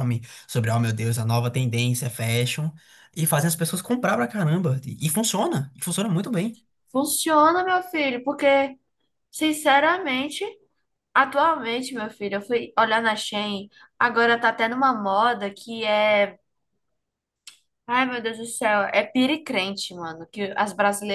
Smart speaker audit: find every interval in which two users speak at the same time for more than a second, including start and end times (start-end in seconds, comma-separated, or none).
none